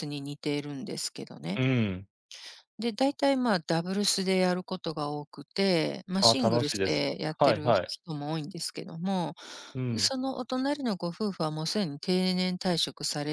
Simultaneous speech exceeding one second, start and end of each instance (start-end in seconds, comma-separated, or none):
6.2-8.0